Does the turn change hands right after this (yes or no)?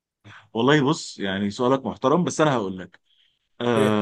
no